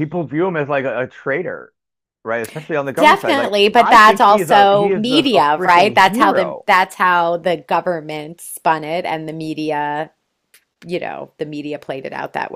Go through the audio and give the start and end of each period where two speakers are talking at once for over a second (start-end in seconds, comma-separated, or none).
3.0-6.7